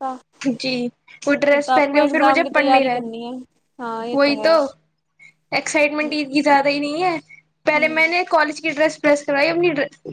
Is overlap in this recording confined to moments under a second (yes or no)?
no